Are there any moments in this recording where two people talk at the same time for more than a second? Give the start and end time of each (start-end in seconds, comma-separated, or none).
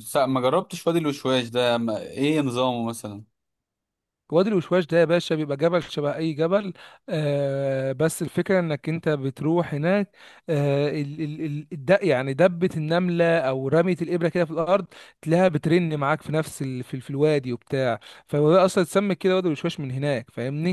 none